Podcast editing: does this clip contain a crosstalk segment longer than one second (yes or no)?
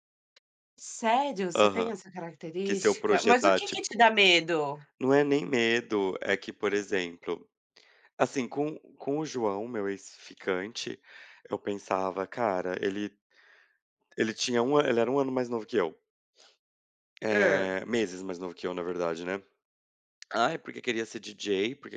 yes